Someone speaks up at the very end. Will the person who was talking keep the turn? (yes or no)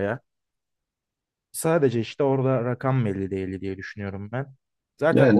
yes